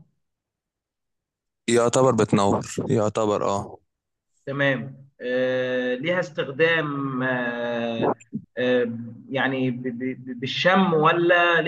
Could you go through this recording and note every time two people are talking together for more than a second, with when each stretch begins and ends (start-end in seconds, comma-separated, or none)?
none